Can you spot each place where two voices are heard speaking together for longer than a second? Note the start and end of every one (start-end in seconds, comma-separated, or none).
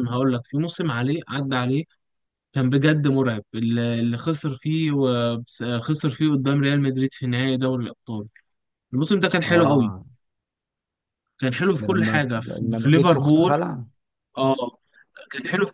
11.8-13.6